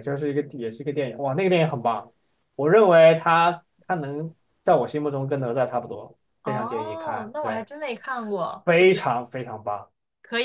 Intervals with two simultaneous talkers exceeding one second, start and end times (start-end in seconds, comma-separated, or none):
6.4-7.7